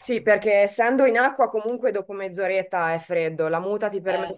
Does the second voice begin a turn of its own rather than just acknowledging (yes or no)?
no